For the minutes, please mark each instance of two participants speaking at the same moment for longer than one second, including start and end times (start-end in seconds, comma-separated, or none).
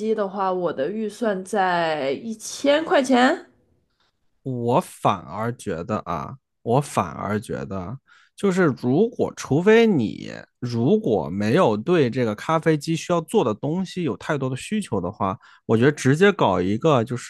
none